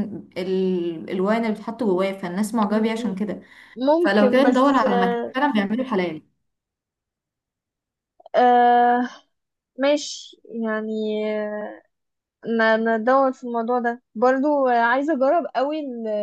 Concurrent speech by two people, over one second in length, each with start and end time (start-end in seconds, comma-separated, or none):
4.0-5.3